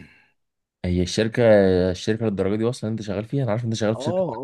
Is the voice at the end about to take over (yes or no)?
yes